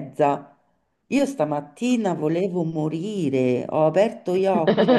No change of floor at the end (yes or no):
yes